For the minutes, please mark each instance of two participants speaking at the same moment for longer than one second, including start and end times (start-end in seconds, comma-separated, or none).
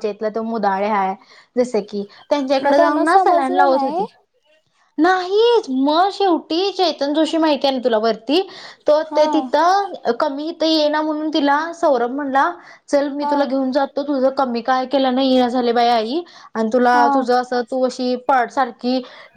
2.6-4.0